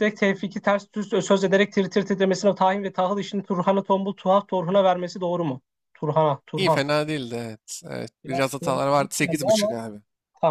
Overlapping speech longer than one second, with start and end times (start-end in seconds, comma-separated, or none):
8.2-9.7